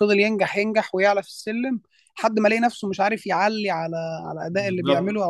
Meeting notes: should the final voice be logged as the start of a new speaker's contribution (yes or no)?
no